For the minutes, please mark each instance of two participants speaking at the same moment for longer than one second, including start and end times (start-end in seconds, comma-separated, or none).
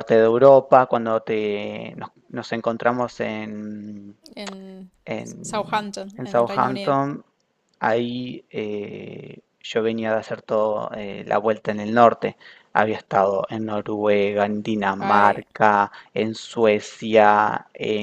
5.4-7.0